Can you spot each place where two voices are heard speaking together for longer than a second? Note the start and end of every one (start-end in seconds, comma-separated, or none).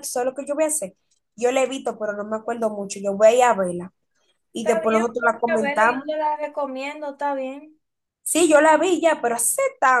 4.6-6.0